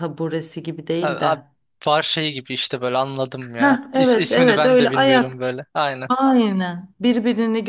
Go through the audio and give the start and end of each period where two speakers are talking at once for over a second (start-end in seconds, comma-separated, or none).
3.6-5.4